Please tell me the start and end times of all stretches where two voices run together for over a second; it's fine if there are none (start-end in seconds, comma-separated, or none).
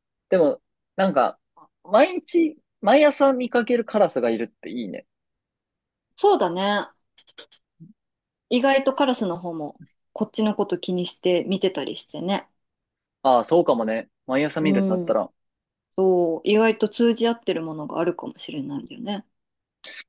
none